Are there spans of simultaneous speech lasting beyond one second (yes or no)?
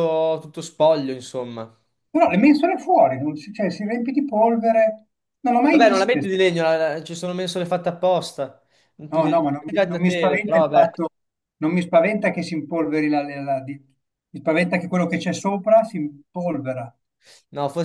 yes